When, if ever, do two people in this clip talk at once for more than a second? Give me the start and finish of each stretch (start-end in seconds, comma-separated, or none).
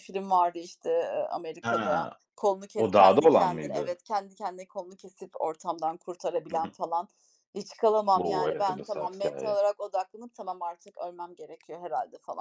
2.8-4.0, 8.1-9.6